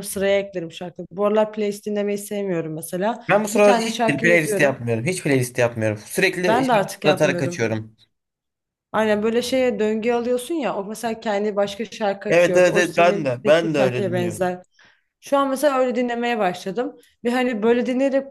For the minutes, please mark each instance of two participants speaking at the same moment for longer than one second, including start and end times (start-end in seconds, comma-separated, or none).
3.3-4.8, 6.2-7.7, 12.3-14.6